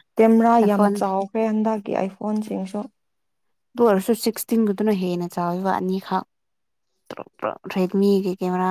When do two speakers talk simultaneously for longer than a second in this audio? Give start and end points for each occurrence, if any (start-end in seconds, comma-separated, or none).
none